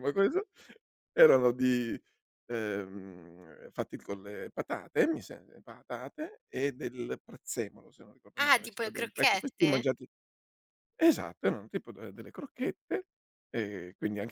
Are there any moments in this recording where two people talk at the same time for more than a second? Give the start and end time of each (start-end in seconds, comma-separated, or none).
8.4-9.9